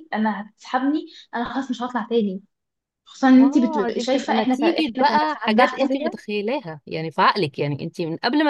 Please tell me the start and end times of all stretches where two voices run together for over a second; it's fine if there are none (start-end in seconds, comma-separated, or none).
3.4-6.2